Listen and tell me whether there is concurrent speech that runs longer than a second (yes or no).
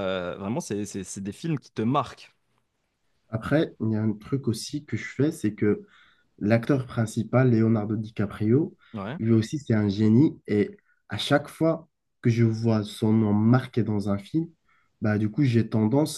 no